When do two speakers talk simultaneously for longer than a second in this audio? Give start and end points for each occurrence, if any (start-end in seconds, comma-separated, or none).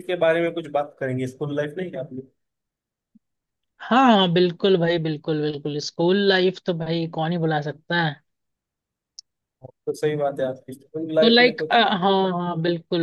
none